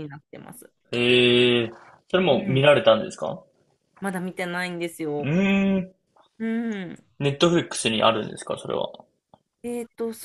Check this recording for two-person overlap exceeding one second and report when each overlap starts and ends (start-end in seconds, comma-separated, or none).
none